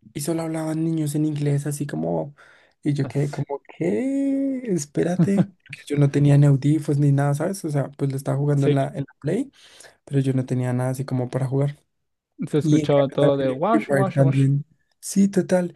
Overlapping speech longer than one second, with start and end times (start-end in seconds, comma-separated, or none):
12.6-14.5